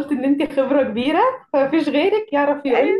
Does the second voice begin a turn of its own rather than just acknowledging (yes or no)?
no